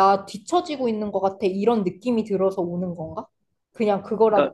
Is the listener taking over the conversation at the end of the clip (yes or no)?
yes